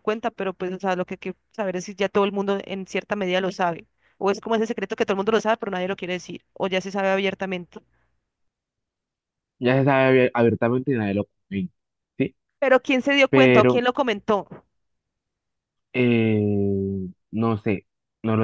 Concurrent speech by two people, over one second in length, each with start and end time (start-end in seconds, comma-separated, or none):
none